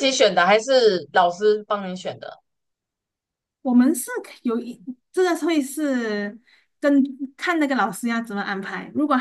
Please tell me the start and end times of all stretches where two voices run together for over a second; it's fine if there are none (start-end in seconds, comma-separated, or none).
none